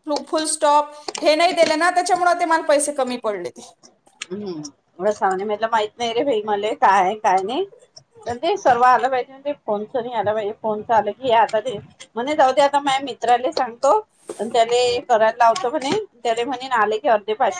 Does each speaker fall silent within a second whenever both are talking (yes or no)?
yes